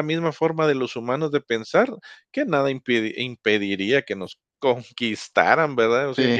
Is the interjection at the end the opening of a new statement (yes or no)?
no